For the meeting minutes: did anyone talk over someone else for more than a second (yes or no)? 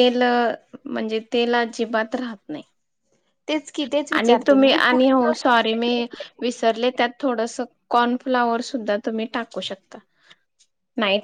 yes